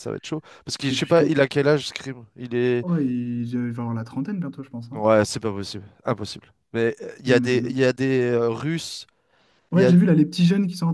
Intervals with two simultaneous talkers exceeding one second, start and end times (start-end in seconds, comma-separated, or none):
none